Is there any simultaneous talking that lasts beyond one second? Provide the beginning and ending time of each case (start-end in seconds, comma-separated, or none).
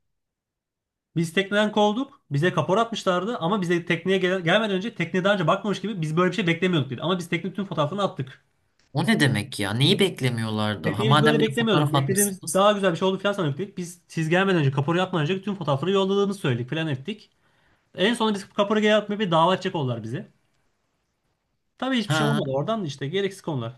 10.8-12.6